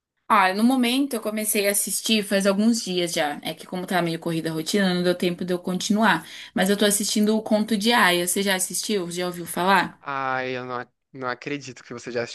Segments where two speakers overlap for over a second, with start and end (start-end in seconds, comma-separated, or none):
none